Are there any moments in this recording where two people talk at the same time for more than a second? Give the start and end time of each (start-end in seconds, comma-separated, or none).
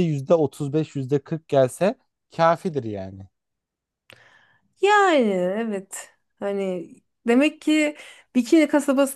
none